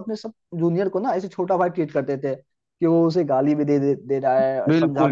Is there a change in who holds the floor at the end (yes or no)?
no